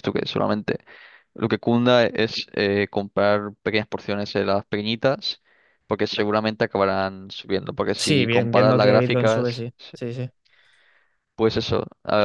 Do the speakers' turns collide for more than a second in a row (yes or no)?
yes